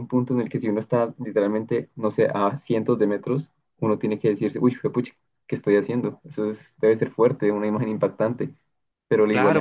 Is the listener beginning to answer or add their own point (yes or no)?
yes